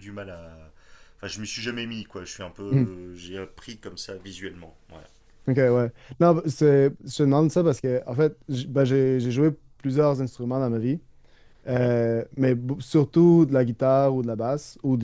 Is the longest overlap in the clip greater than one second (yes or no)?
no